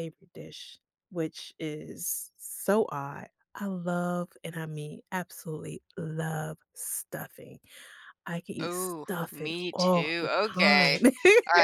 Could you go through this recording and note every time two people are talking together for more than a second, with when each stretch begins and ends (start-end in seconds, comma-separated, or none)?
8.6-11.0